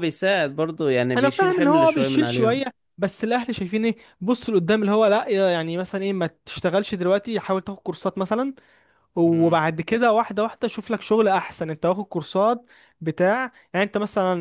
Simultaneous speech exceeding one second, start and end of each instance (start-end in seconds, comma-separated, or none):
1.2-2.6